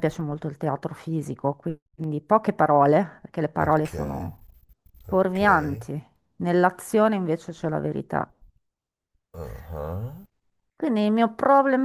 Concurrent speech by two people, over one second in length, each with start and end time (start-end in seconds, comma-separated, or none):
none